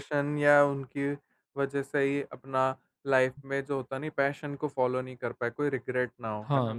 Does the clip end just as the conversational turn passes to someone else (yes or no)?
yes